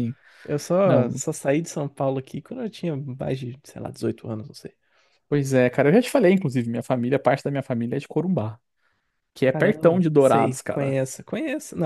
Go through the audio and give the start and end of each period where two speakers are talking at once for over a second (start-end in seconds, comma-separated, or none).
9.5-10.9